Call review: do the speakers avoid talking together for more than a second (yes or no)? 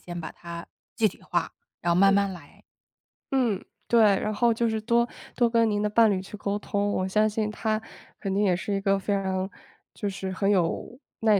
yes